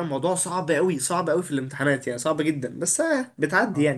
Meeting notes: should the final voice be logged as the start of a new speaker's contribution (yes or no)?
yes